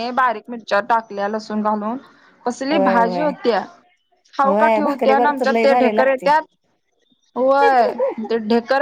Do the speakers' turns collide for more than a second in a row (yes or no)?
yes